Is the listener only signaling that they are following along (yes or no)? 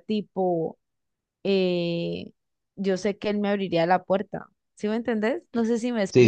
no